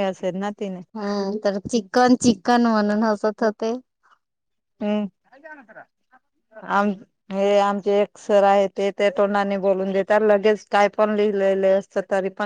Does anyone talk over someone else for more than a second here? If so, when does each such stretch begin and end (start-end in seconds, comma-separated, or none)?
none